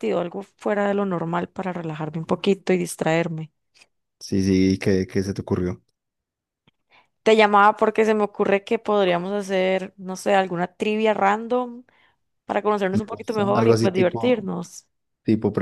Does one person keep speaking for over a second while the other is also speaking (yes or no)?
yes